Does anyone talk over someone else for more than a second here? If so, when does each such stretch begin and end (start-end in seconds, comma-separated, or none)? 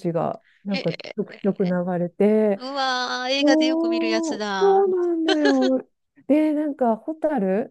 3.4-4.9